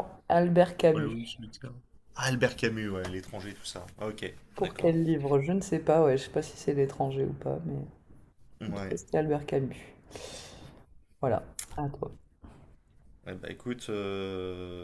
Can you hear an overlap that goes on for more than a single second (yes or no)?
no